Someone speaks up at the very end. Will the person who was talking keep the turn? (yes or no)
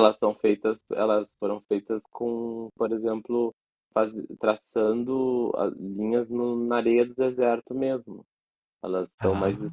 yes